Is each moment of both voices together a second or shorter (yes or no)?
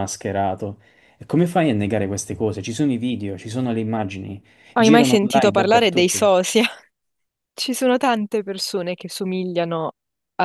no